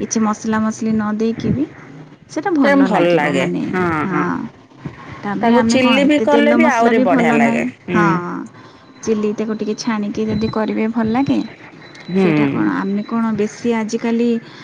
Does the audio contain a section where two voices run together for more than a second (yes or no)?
yes